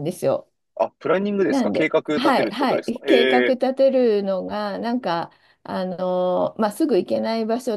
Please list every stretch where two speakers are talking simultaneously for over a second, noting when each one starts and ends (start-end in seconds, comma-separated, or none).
1.5-3.6